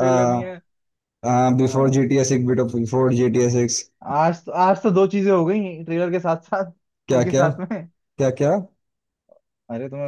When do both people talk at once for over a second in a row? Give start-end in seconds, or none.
none